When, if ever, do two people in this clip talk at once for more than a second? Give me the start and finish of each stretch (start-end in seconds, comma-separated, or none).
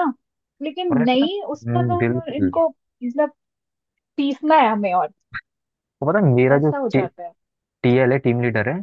0.9-2.5